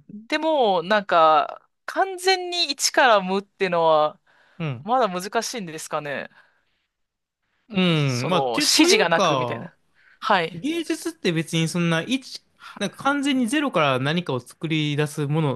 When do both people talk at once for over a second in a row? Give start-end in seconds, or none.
7.9-9.7